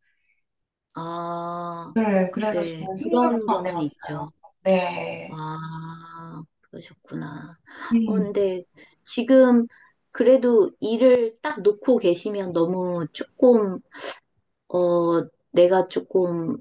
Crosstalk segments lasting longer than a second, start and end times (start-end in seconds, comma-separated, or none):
2.5-4.2